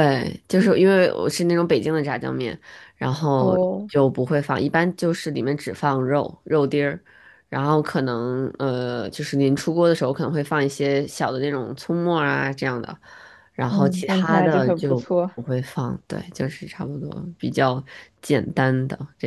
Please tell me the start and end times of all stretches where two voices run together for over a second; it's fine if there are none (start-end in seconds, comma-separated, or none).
13.7-15.3